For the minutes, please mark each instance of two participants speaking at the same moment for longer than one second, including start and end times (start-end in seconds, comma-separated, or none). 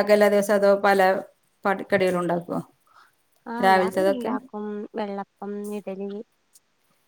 none